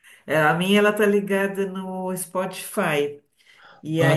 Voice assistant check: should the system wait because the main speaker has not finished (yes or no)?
yes